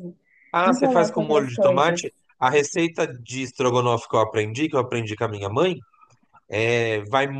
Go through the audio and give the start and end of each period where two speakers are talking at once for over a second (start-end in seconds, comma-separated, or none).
0.6-2.0